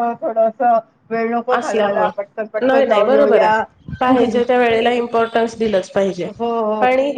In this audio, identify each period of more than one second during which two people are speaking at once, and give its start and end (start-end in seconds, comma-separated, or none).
1.6-3.6